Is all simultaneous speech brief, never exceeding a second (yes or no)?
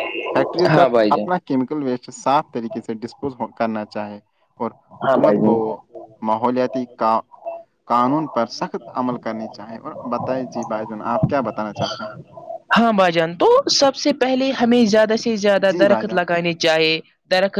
yes